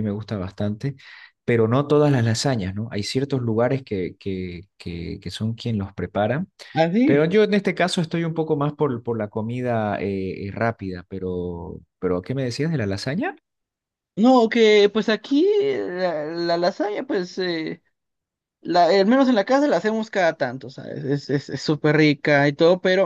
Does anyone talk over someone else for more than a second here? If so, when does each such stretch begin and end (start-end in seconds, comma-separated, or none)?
none